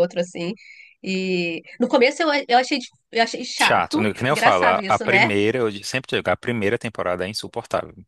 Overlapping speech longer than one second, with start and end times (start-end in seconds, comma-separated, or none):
3.6-5.3